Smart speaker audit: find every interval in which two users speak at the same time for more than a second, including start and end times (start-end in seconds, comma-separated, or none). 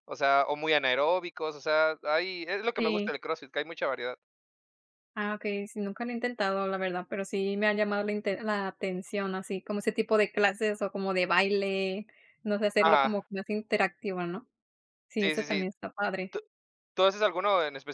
none